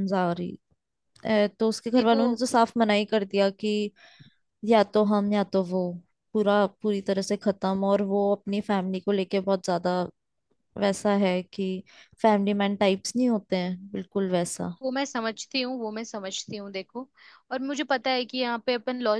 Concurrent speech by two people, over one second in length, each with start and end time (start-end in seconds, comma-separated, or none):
none